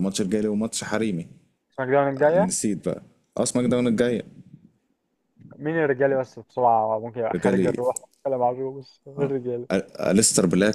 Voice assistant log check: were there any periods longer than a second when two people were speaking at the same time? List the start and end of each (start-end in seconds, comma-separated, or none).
none